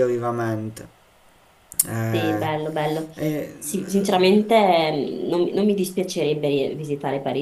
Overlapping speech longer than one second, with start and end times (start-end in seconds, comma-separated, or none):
none